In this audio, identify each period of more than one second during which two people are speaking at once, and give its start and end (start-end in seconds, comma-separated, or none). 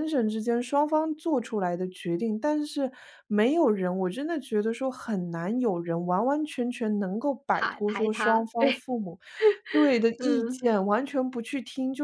7.5-8.8